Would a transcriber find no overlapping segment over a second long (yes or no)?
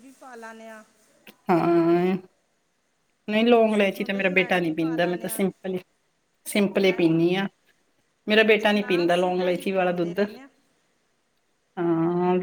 no